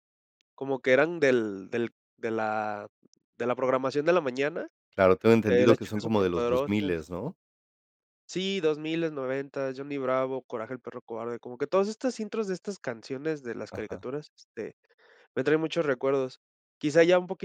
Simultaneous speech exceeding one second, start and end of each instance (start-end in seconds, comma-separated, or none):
5.5-7.0